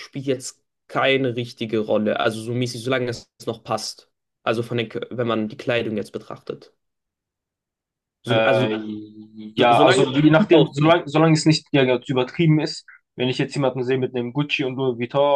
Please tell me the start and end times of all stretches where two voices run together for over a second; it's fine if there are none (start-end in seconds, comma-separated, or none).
9.6-11.0